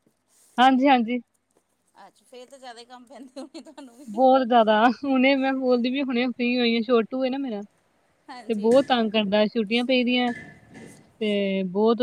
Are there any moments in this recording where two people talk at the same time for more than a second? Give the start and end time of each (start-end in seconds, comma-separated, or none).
none